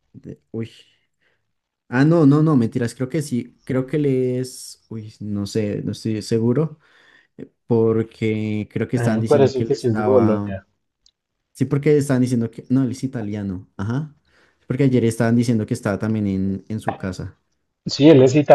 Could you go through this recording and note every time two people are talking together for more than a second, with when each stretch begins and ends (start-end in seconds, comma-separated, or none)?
8.9-10.5